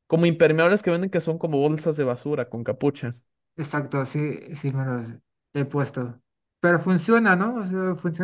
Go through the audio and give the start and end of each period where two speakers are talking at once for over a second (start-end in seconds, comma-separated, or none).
none